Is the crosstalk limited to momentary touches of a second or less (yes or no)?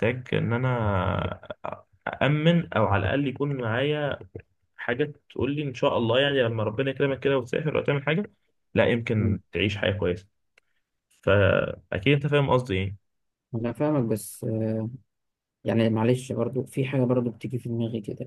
yes